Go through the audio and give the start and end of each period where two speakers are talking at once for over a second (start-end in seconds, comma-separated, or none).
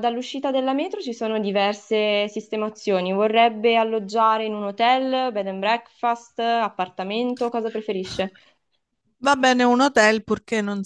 none